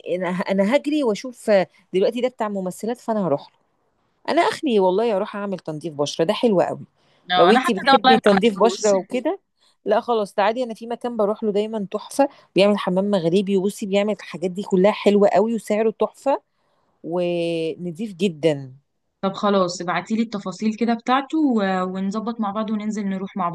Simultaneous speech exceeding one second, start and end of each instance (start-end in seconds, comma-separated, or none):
7.4-8.9